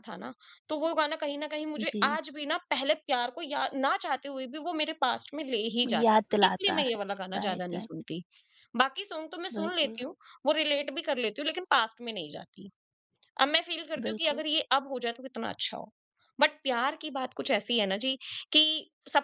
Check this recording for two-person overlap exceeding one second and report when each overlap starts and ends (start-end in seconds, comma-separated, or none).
5.8-7.9